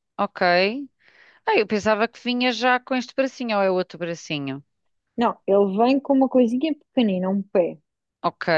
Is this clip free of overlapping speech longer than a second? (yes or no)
yes